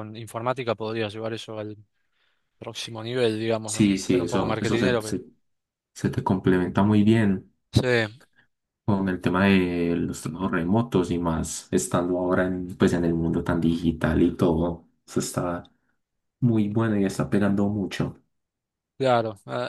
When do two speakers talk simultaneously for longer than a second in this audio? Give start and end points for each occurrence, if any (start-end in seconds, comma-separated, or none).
3.6-5.2